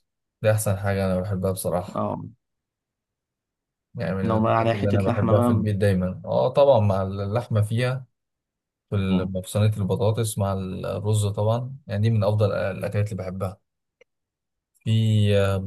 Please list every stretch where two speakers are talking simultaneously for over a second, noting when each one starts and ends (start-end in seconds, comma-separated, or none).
4.2-5.7